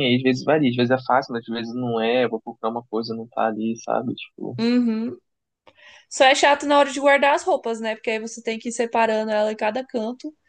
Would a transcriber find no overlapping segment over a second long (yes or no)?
yes